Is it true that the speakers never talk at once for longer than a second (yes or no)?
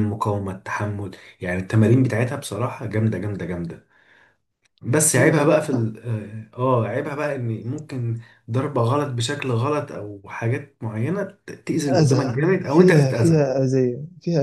no